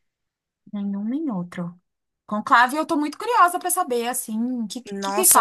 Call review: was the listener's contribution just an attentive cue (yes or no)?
no